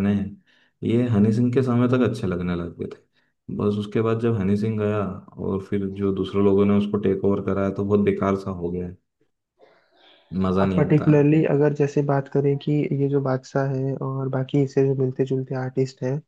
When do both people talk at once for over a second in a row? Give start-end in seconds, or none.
none